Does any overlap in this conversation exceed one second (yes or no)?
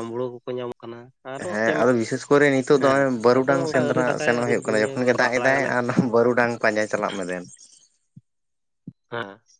yes